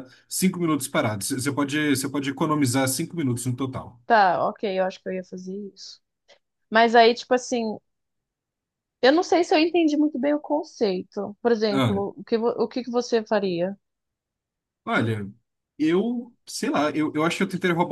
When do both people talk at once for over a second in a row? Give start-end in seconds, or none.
none